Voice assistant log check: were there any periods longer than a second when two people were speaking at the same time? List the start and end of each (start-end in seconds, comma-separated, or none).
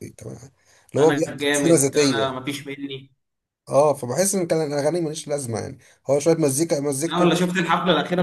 1.0-2.4